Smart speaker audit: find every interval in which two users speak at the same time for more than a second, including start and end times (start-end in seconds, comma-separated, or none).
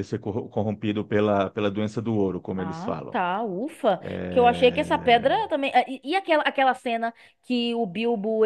4.0-5.4